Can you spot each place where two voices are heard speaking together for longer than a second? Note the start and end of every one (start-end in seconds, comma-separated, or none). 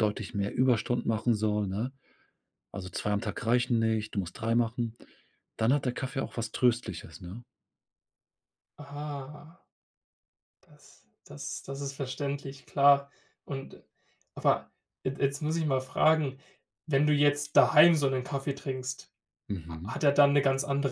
none